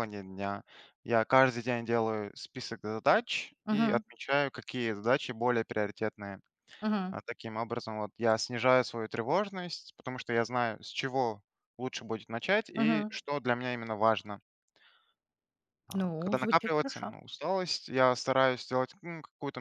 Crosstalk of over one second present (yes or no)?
yes